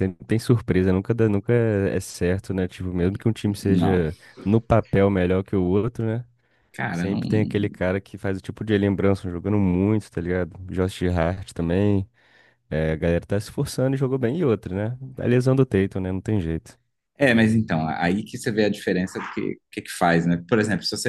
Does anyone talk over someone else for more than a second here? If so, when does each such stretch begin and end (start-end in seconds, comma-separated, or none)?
none